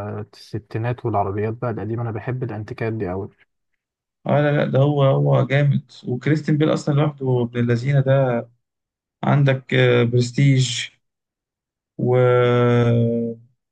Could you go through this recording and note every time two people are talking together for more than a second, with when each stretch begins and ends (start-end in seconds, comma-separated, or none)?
none